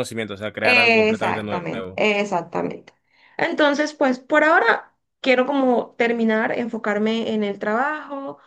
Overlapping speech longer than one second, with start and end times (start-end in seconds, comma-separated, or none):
0.6-2.0